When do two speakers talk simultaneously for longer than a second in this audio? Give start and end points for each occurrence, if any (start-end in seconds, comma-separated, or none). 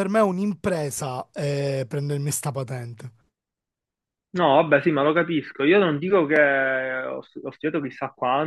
none